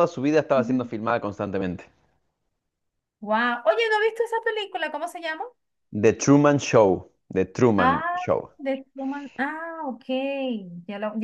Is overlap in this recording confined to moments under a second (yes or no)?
yes